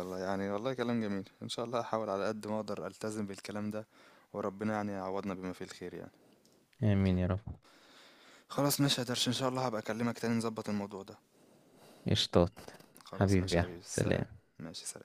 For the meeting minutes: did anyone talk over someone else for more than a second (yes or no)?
yes